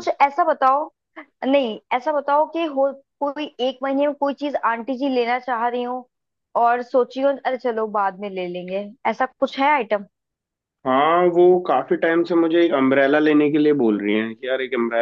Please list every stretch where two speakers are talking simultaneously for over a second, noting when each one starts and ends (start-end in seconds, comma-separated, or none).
none